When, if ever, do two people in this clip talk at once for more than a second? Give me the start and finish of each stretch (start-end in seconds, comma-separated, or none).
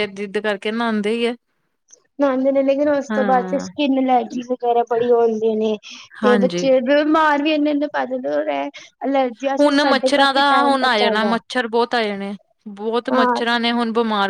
none